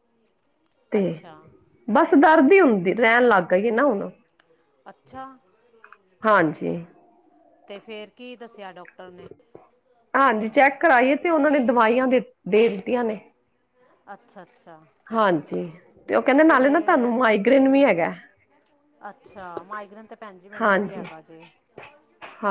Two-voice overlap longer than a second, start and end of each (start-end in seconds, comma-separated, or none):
none